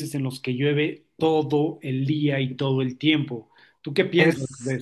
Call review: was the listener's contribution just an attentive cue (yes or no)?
no